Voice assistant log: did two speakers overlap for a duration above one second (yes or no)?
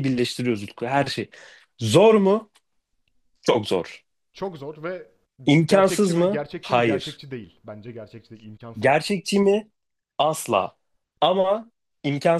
yes